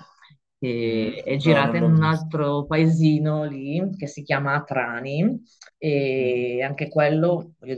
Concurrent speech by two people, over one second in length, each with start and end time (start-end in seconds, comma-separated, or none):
0.9-2.3